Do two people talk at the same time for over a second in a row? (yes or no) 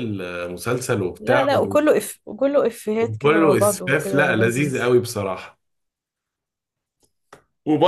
yes